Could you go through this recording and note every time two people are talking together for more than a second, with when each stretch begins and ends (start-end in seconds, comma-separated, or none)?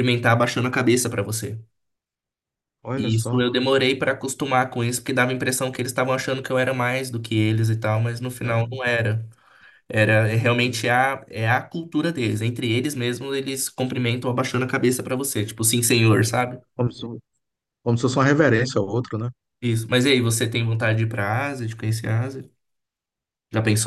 none